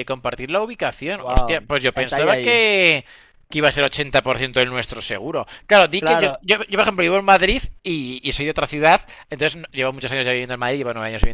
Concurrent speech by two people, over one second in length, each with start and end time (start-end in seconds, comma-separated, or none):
1.2-2.6